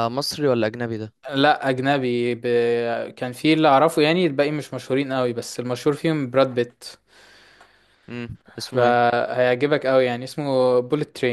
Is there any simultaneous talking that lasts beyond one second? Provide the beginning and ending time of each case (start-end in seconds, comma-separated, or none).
none